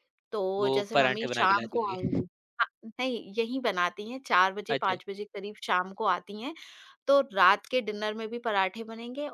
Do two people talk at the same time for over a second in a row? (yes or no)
yes